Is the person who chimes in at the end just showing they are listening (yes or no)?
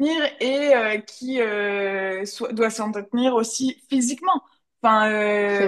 yes